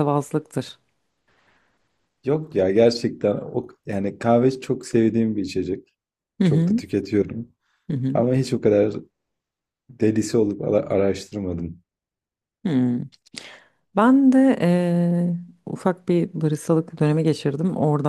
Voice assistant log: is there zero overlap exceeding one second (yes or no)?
yes